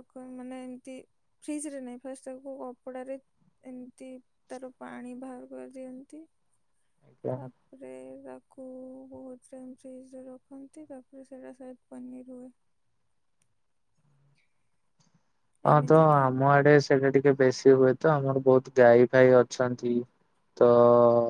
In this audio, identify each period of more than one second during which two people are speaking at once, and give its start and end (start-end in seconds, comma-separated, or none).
none